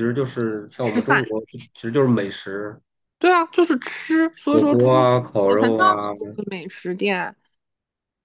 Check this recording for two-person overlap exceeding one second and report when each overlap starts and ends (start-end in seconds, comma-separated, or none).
4.5-6.1